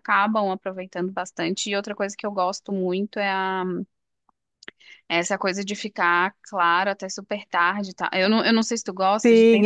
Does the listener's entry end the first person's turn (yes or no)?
yes